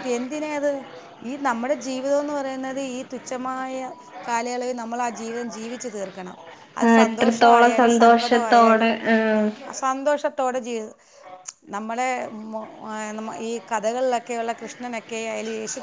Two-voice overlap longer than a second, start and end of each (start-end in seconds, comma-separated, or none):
6.9-8.9